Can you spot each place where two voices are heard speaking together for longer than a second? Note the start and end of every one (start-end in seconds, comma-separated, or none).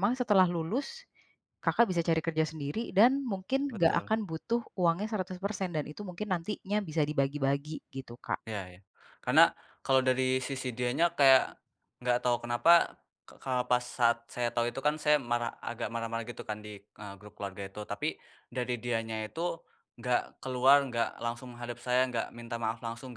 none